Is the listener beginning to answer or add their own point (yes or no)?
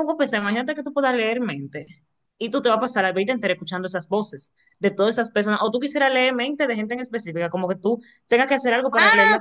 yes